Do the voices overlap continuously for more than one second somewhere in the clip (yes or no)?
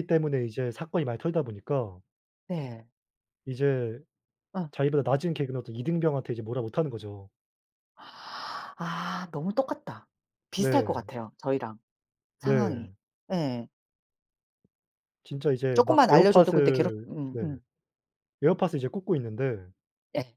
yes